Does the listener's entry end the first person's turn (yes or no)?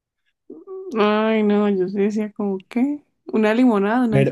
yes